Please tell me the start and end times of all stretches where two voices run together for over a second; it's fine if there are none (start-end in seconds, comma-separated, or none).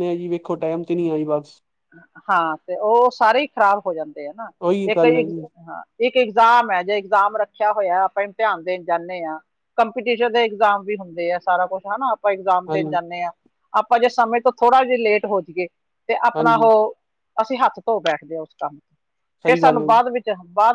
none